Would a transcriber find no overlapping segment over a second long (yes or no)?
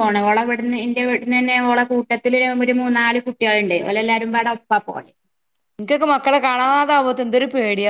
yes